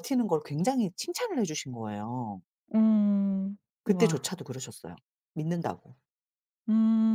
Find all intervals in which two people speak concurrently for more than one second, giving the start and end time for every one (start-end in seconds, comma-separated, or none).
none